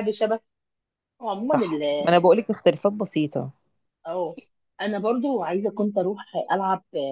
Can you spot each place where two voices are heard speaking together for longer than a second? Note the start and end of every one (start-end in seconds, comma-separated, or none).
none